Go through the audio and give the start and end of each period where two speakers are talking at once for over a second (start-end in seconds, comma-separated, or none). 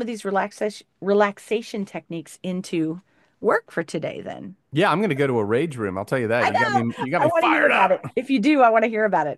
6.4-8.1